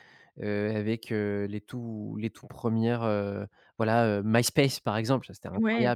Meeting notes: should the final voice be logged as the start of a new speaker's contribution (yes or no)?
yes